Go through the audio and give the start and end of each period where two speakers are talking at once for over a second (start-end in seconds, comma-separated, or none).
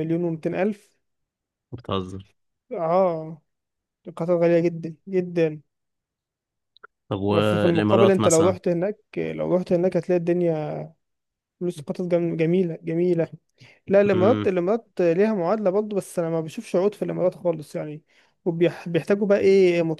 7.3-8.6